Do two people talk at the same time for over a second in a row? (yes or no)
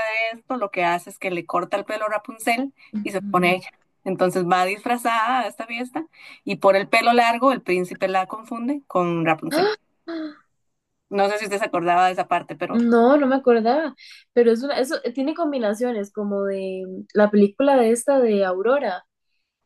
no